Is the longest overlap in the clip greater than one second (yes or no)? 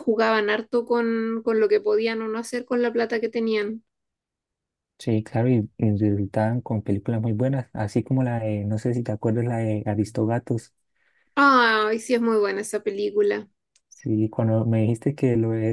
no